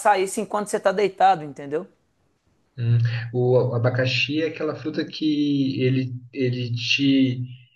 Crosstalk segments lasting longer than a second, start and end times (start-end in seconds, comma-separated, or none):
none